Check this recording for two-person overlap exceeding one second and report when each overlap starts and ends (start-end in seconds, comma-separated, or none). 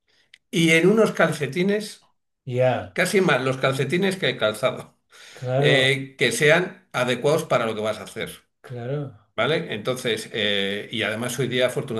none